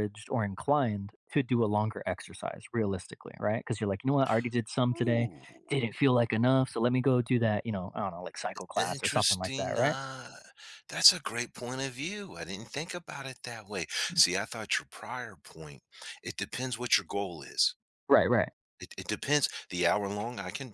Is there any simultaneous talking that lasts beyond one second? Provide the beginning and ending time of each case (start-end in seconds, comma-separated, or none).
8.8-10.0